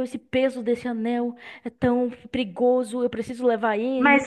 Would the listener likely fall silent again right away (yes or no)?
no